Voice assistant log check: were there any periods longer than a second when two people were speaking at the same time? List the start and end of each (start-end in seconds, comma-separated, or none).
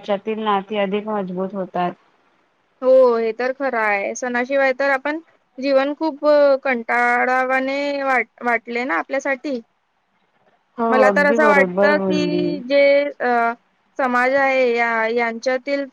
10.9-12.4